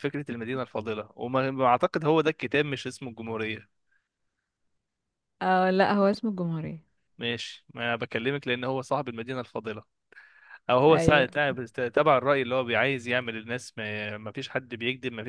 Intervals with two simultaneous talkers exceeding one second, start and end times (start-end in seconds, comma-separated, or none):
none